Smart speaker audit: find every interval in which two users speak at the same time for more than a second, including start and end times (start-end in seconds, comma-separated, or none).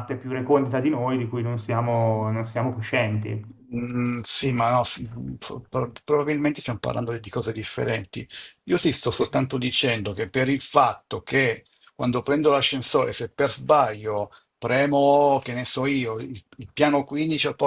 none